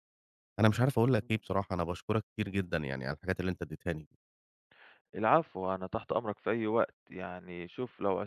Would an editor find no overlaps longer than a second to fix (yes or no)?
yes